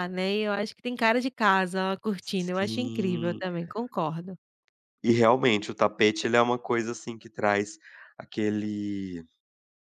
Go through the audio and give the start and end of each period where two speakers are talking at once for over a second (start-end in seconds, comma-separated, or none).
2.2-3.4